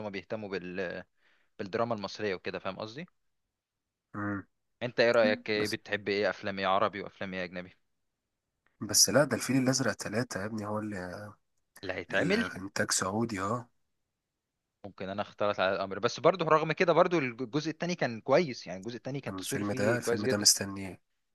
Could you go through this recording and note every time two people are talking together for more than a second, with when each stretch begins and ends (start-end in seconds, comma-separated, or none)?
19.3-20.5